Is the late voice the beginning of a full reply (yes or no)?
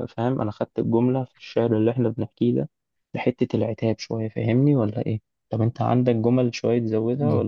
yes